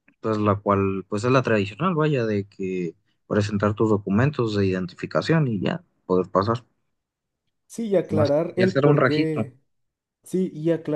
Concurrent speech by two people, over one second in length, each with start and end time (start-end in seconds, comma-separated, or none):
8.1-9.4